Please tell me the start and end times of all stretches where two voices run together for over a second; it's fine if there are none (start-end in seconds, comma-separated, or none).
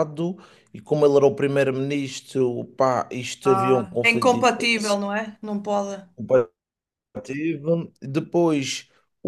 3.5-5.0